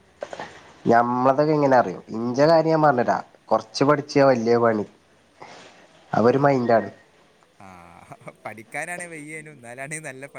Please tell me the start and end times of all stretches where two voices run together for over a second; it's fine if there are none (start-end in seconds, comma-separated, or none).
none